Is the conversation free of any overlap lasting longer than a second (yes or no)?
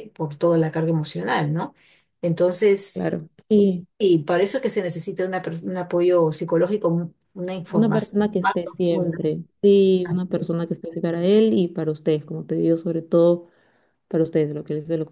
no